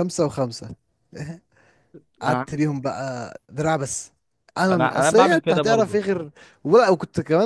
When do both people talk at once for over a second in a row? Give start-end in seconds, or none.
4.7-6.0